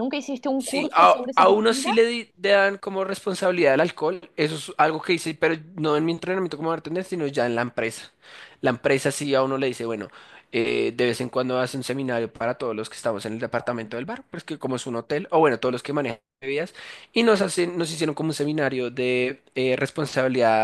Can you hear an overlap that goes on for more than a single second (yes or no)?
yes